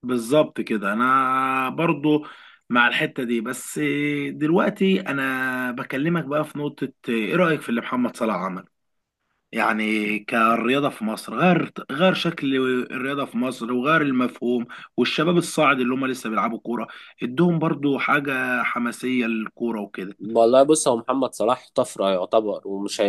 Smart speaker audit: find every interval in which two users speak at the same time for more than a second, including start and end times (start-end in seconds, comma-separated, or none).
none